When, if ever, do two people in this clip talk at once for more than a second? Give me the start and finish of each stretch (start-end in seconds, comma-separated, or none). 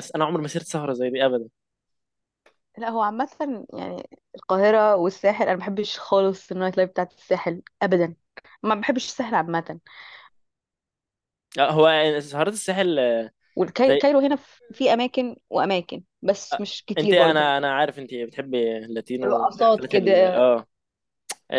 19.2-20.4